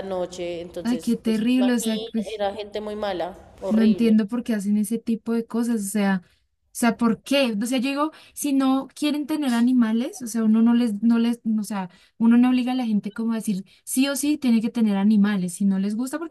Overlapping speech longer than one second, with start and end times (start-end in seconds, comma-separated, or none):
0.8-2.4